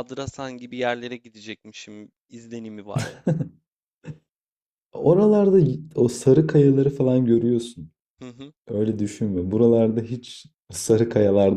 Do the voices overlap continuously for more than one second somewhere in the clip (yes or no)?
no